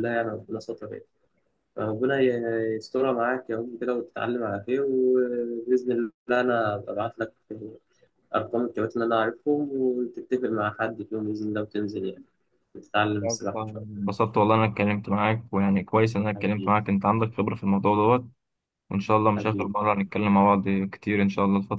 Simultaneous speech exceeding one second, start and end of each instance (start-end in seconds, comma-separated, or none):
none